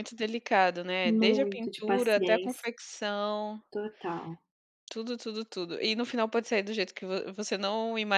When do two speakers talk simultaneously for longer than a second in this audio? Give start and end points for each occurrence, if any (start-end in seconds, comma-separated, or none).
1.1-2.7